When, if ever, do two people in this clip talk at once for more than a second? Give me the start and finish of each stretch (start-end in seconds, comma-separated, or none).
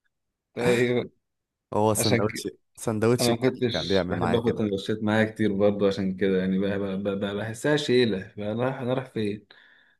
3.2-4.7